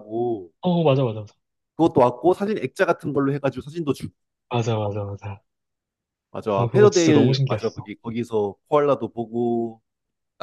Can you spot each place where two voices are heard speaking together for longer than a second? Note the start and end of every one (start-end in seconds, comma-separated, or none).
6.6-7.9